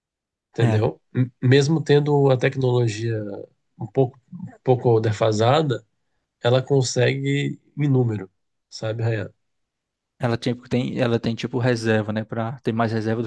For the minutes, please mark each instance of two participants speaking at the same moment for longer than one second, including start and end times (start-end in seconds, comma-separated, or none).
none